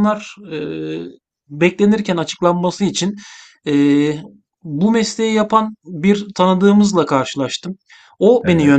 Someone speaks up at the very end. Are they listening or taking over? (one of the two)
listening